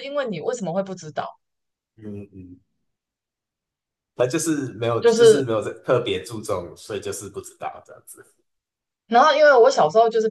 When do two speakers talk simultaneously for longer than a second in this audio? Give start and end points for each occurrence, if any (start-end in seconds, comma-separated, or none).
none